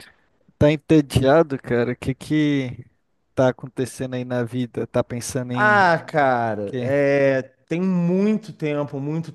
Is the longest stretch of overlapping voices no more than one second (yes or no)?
yes